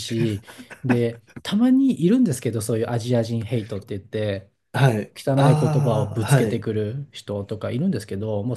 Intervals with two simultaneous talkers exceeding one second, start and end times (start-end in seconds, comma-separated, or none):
5.2-6.6